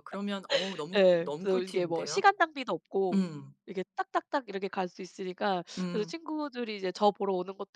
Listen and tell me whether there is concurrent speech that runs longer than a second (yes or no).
yes